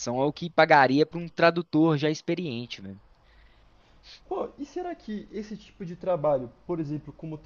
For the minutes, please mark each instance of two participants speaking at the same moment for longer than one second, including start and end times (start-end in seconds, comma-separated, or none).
none